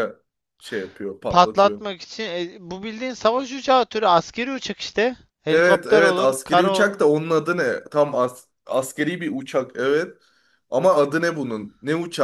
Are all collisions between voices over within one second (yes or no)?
no